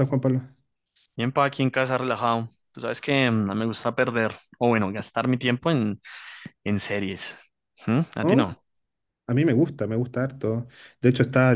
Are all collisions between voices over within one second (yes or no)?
yes